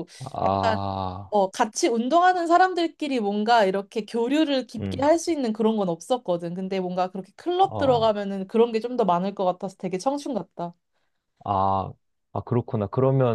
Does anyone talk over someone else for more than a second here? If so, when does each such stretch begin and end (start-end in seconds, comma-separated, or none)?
none